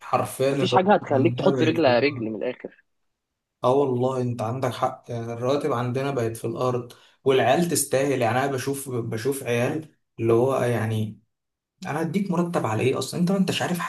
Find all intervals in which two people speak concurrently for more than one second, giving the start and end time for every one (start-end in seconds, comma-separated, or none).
0.5-2.3